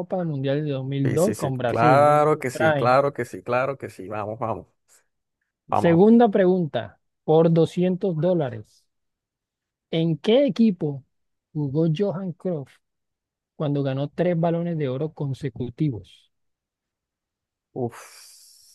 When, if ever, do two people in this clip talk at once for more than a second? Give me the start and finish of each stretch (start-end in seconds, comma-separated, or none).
1.0-3.0